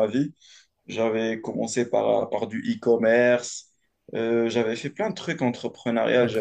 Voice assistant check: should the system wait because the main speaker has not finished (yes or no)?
yes